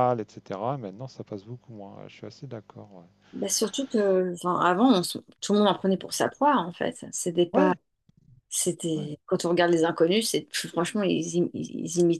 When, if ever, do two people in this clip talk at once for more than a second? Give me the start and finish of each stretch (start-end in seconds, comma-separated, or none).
none